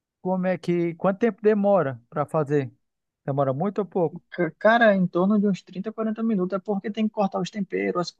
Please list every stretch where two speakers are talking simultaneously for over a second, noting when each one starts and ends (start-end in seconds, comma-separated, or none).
none